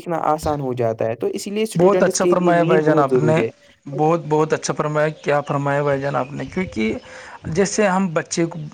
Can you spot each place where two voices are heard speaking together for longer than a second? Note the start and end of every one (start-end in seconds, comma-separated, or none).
1.8-3.4